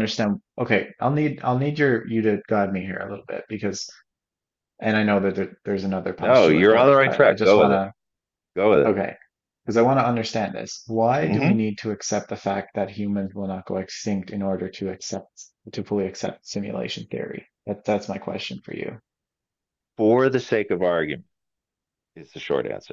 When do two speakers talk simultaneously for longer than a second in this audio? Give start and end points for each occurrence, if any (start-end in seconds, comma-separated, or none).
6.2-7.7